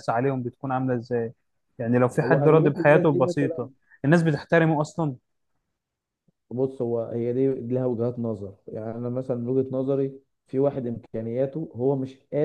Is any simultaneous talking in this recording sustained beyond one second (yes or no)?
yes